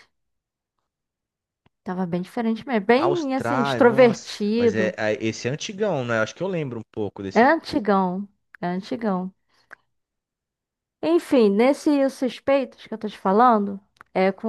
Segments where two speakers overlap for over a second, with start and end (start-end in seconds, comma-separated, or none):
3.0-5.0